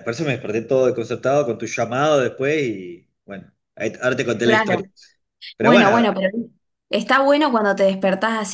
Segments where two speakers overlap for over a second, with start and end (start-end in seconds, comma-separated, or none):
none